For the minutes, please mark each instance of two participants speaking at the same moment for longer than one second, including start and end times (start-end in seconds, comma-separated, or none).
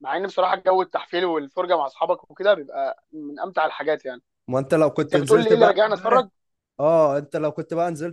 5.0-6.2